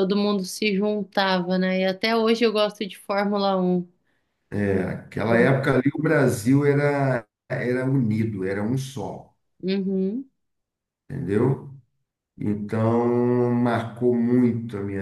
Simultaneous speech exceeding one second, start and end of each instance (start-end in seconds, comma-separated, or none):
none